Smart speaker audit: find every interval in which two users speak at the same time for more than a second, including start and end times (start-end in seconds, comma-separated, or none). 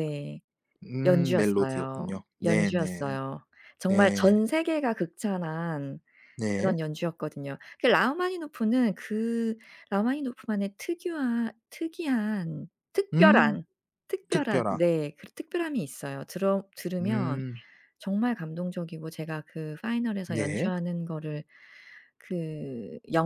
1.0-3.2